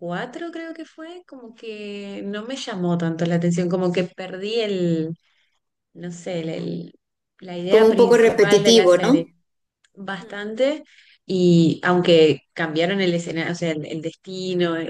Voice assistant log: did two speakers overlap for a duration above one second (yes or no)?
yes